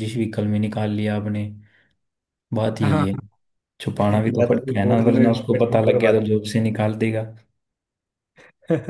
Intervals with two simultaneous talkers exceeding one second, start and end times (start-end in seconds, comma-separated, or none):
4.4-6.1